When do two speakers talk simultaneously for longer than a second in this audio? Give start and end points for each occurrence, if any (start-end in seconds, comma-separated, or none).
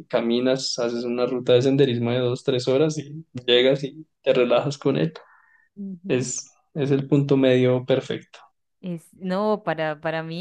none